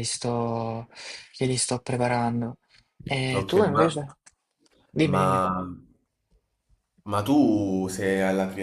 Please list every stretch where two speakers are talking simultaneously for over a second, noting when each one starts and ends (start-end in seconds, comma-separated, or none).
none